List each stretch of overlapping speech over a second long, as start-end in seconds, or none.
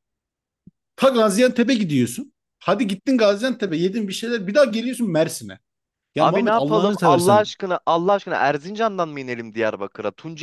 6.2-7.5